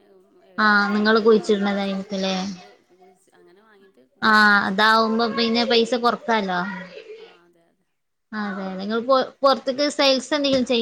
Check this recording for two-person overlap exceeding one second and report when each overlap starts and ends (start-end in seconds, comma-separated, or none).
0.6-2.4